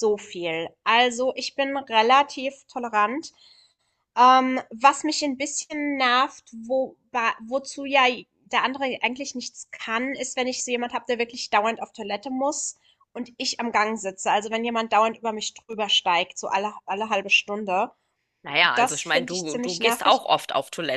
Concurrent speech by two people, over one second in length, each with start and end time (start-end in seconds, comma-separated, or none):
18.8-20.2